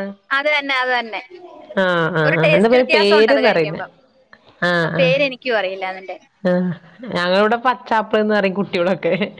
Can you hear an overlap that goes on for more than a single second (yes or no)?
yes